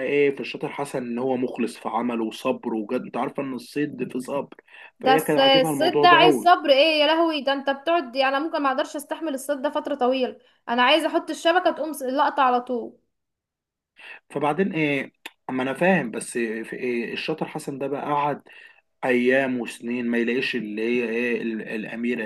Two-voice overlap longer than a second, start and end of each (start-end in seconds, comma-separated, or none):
5.0-6.5